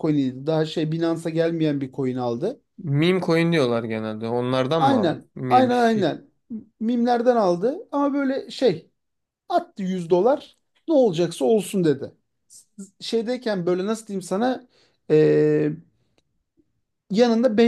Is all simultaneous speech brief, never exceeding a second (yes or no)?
no